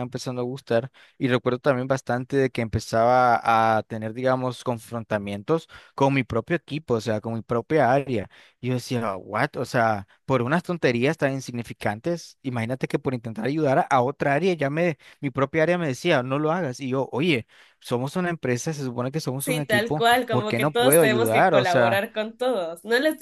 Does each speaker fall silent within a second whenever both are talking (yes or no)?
no